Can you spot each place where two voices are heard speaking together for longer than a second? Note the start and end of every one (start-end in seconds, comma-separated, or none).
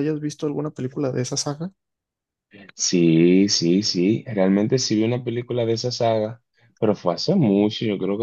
none